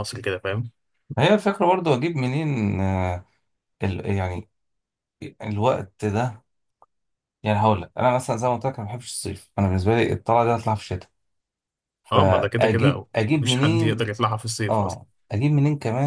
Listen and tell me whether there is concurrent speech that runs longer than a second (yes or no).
yes